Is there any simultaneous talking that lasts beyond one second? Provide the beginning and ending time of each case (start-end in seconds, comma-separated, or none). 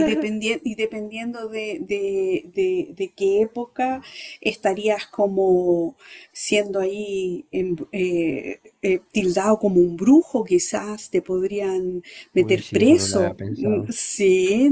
12.4-13.9